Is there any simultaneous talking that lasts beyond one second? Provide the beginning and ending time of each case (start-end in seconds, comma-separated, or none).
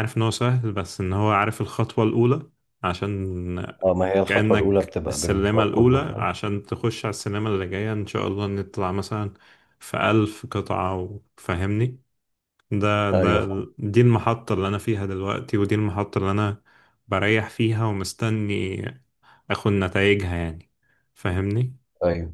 4.3-6.3